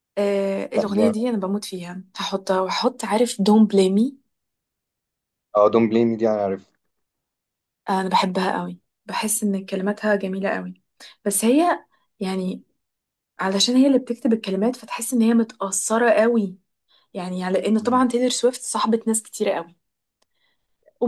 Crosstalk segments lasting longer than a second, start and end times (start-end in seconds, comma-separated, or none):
none